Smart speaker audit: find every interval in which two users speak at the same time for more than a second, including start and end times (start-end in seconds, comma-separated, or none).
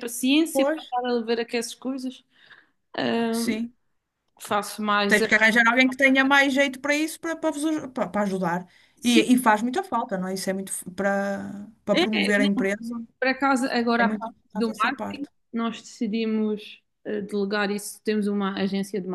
14.0-15.3